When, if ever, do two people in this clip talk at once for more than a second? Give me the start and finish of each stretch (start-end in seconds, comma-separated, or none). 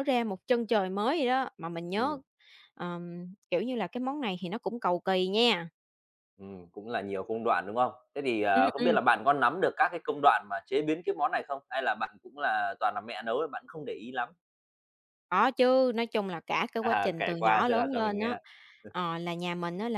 16.8-18.4